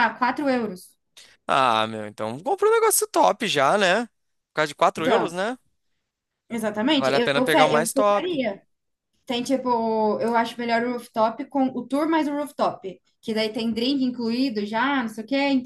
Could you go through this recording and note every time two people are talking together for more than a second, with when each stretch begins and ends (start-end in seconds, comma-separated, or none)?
7.0-8.4